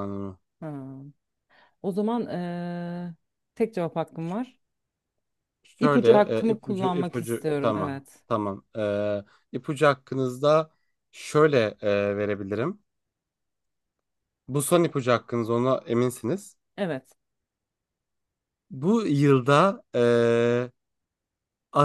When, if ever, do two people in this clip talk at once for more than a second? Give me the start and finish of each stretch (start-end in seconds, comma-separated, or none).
5.8-8.2